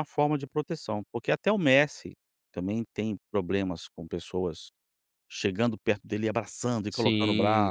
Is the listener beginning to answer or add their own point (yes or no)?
yes